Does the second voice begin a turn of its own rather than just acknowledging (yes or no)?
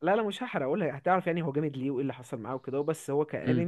no